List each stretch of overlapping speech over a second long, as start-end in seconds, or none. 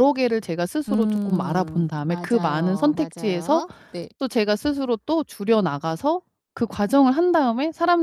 0.9-3.6